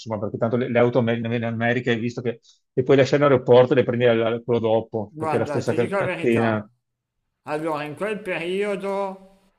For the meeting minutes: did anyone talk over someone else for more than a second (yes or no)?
yes